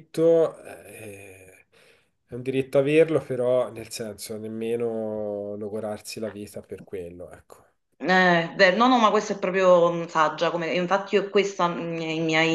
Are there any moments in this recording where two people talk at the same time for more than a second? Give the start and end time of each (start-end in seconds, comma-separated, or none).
none